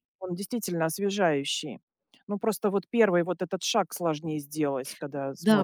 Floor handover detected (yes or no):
yes